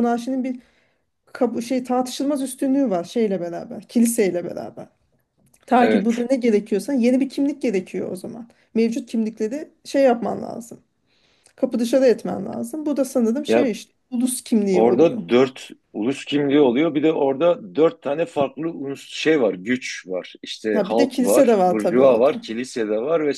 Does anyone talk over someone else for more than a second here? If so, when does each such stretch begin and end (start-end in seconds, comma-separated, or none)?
20.7-22.4